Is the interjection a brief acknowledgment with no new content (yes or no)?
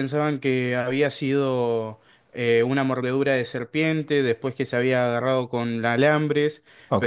no